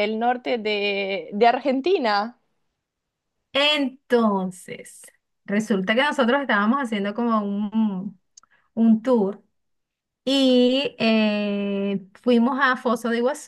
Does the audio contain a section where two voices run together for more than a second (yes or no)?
no